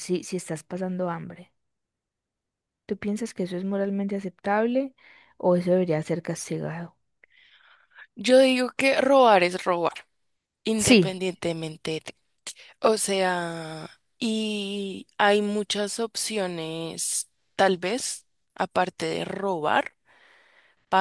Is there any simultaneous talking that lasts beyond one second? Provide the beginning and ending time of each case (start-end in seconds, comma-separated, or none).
none